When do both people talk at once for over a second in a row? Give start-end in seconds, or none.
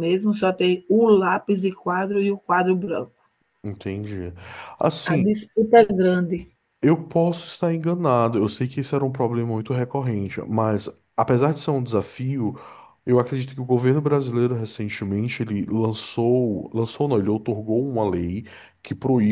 none